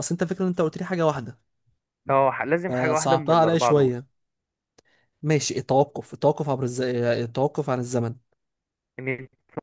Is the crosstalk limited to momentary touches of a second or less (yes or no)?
no